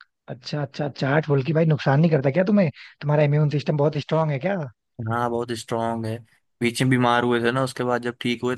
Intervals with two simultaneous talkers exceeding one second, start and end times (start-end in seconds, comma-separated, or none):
none